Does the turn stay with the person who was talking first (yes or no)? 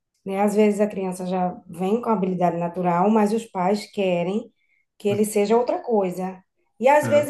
yes